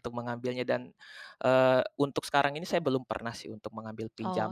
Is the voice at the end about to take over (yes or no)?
yes